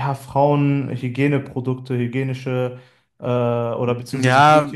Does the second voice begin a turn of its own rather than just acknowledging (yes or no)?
yes